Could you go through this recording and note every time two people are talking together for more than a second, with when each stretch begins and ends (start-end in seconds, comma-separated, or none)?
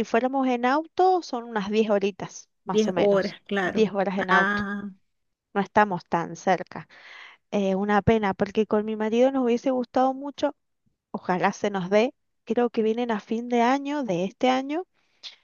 2.6-4.7